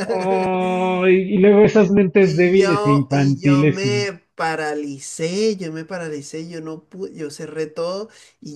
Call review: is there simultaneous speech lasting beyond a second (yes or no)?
yes